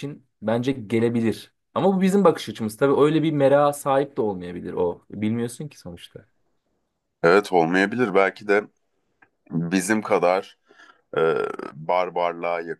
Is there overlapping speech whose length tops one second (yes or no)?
no